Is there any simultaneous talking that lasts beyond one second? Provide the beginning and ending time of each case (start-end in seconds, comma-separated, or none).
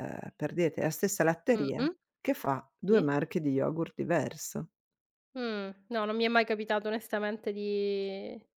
none